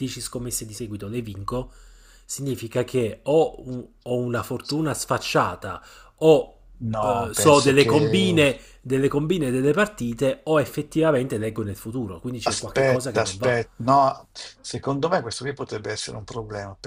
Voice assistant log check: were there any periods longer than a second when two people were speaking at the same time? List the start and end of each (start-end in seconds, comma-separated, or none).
7.0-8.4, 12.4-13.7